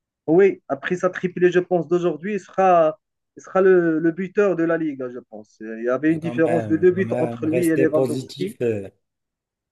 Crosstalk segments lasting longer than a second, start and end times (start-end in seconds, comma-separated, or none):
6.1-8.6